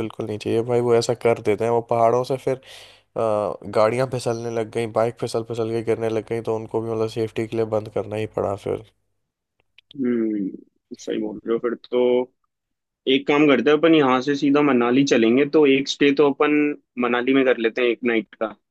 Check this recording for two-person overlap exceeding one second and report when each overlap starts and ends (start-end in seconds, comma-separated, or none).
none